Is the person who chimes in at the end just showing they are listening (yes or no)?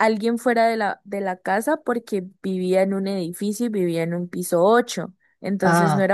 yes